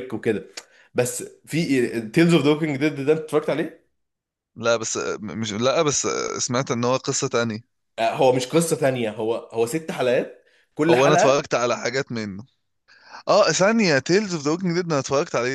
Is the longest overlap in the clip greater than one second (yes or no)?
no